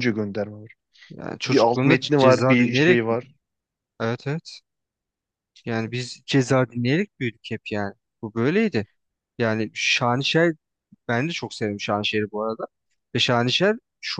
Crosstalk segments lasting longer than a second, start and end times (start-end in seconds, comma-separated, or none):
1.5-3.2